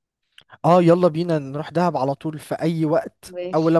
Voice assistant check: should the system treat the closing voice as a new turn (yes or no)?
no